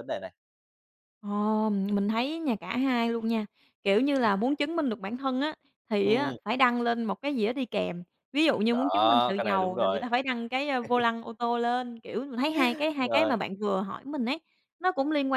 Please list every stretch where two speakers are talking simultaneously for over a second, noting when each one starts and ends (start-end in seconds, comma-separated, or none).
8.7-10.0